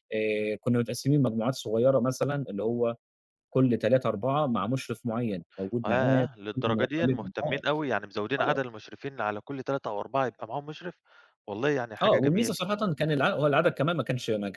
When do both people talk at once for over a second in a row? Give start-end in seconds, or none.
5.9-7.6